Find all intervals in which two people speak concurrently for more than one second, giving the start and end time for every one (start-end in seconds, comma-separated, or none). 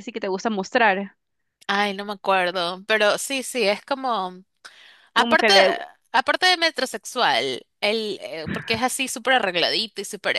none